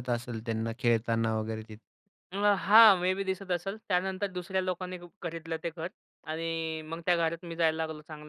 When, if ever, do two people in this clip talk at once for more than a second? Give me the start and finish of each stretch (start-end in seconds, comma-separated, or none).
none